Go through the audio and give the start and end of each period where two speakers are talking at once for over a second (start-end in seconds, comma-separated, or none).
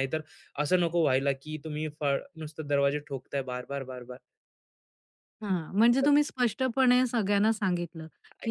none